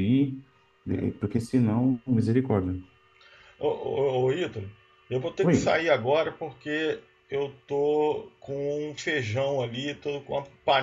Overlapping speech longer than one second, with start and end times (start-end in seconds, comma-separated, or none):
none